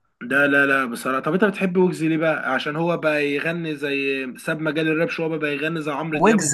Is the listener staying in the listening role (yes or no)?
no